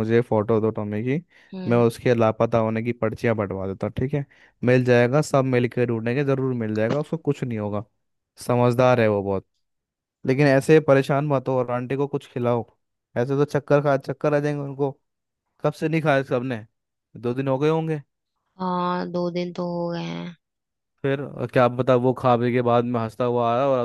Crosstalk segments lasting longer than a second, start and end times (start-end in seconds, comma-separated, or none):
none